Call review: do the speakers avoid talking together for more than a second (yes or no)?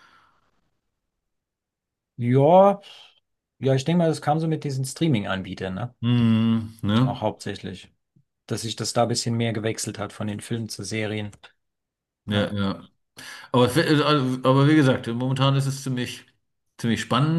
yes